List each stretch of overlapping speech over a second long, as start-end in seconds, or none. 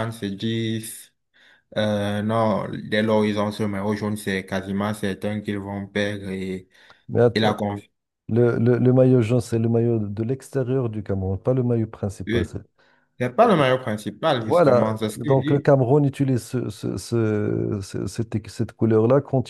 14.4-15.7